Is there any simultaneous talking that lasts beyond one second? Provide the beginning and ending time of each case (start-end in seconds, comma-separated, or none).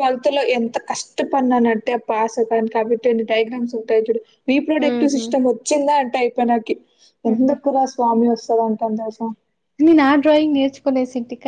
none